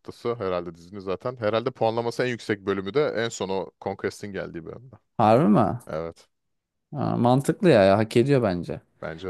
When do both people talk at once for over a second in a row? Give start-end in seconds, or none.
none